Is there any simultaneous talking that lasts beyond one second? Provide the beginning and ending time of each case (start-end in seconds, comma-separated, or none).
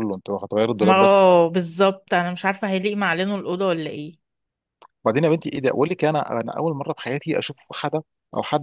none